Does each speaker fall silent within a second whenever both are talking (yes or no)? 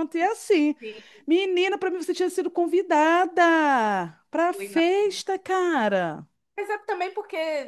yes